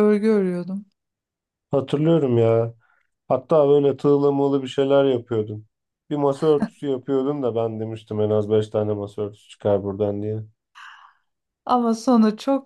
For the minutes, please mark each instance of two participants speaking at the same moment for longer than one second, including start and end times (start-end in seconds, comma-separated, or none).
none